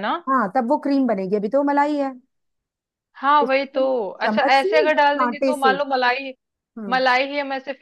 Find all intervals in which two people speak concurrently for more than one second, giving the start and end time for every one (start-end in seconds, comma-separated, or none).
3.4-5.8